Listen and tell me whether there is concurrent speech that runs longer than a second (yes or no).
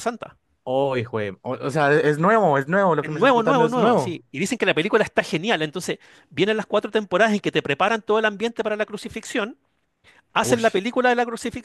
yes